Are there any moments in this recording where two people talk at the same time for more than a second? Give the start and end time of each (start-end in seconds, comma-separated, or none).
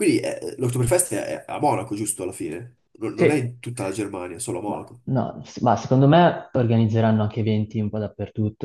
none